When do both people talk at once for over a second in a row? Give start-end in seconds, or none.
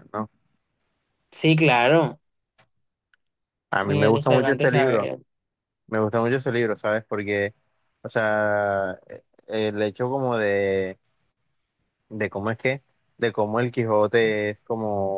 3.8-5.1